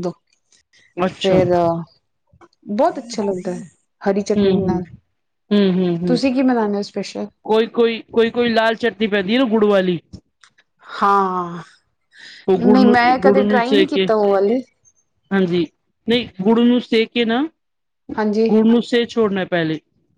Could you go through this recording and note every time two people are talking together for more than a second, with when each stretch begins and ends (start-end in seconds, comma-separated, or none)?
12.6-14.1